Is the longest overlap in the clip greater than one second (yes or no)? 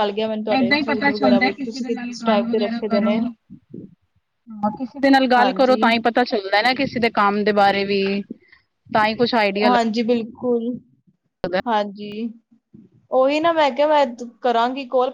yes